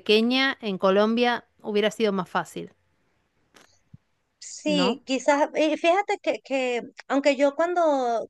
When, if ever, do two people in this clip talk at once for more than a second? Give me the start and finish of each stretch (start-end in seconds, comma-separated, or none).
none